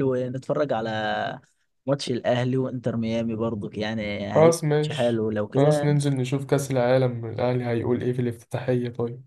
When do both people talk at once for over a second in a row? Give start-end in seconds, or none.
4.4-6.0